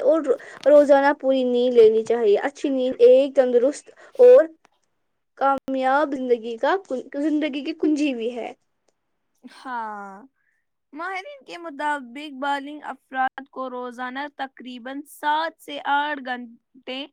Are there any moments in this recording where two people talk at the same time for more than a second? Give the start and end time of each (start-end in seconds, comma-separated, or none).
none